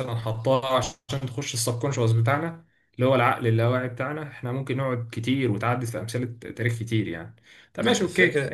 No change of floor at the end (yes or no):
yes